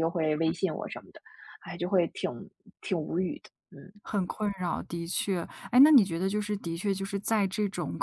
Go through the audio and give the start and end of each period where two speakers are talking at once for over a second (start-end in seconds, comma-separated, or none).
none